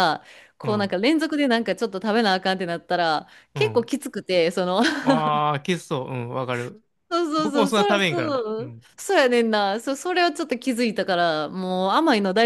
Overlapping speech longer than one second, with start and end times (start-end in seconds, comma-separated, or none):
7.4-8.9